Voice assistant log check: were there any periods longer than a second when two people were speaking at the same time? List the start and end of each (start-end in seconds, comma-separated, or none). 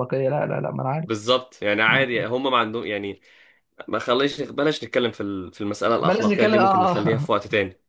6.0-7.3